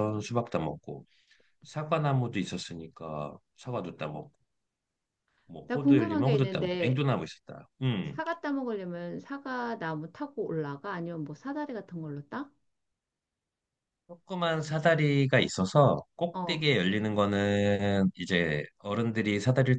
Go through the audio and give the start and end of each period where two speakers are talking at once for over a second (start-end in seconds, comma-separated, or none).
5.7-7.0